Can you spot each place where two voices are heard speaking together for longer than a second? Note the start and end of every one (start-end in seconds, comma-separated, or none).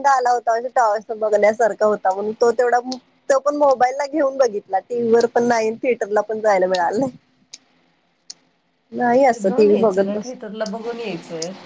none